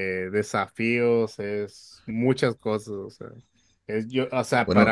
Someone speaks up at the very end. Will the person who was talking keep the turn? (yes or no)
yes